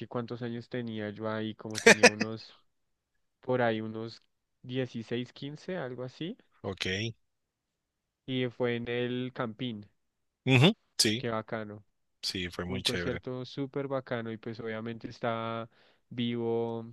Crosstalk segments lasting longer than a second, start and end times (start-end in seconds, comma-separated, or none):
none